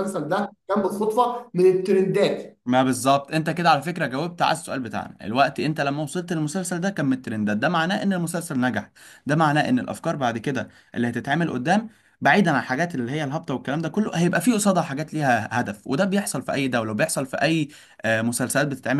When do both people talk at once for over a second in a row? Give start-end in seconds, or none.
none